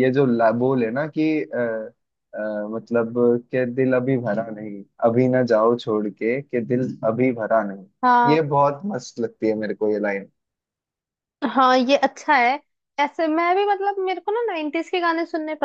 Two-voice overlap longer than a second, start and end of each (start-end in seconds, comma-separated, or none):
none